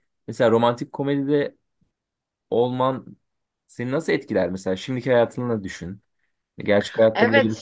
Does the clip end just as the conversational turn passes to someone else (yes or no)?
yes